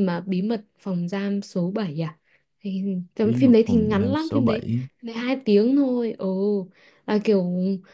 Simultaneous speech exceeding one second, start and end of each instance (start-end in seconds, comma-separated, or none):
3.2-4.7